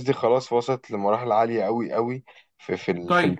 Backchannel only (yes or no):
no